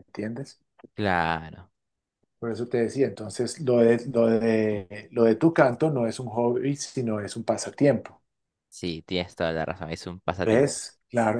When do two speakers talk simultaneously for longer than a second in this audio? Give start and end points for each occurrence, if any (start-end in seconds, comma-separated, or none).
none